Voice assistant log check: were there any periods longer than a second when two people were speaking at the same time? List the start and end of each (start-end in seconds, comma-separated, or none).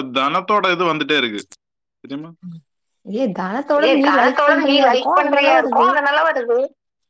3.9-5.9